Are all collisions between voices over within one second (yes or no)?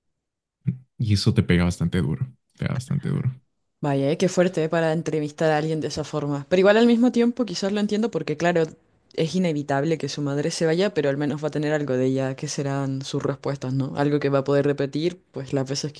yes